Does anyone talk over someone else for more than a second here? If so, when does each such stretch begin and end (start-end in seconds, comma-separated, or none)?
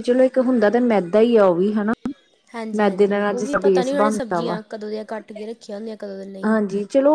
2.8-4.6